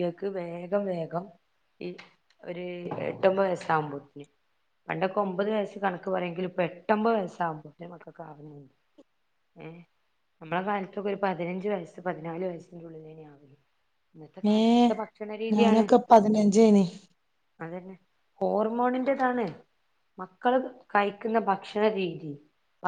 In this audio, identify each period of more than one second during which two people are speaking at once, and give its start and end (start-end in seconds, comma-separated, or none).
none